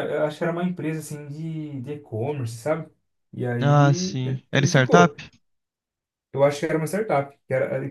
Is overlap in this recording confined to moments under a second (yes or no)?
no